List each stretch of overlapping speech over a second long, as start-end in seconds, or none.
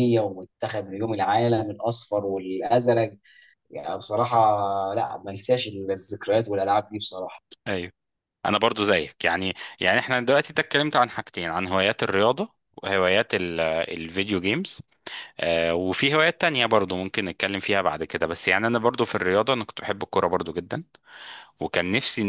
none